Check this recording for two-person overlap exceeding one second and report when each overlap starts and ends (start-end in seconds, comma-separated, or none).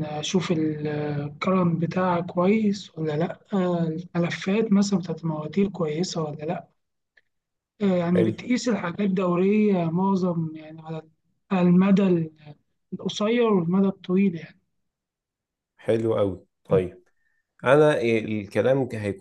none